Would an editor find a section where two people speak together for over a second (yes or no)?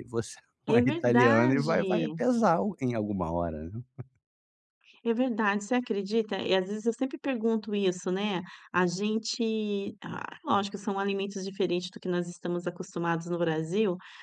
yes